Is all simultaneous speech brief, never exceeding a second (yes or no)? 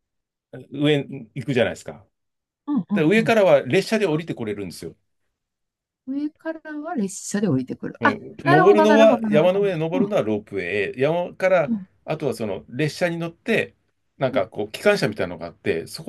no